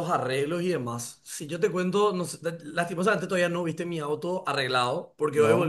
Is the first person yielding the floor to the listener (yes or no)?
no